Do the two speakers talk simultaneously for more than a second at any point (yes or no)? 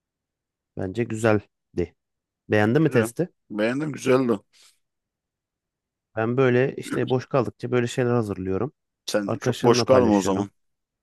yes